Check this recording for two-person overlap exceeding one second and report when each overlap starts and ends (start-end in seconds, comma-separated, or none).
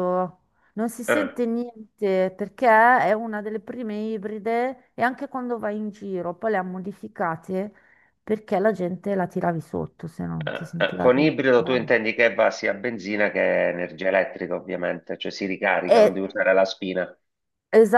10.4-11.9